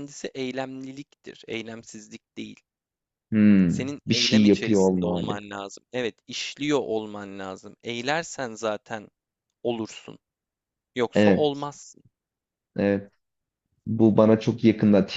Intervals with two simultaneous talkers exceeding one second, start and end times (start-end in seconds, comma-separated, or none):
3.7-5.4